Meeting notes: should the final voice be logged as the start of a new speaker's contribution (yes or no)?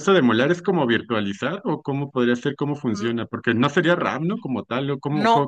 yes